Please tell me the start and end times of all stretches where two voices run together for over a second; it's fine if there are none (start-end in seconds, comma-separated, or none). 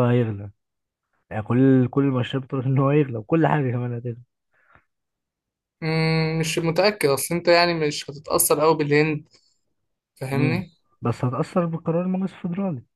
none